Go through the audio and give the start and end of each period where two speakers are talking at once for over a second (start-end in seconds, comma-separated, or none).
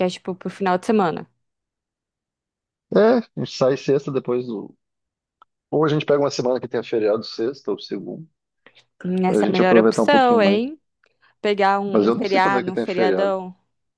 9.2-10.6, 11.9-13.3